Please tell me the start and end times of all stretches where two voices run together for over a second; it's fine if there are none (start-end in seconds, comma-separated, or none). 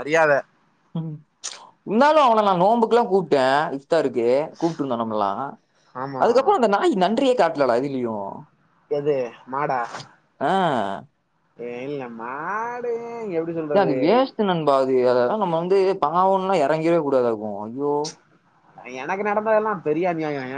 none